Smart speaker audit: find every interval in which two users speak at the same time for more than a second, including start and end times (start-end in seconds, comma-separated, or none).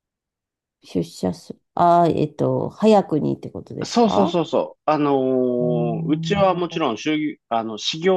5.6-6.8